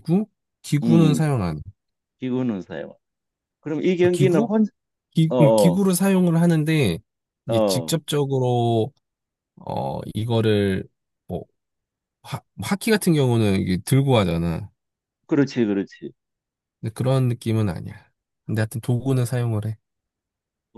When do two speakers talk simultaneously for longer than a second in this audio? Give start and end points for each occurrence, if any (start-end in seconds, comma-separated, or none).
none